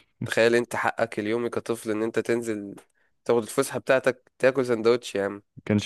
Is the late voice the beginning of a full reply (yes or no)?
yes